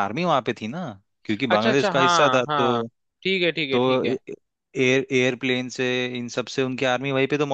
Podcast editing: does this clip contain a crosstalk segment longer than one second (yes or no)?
yes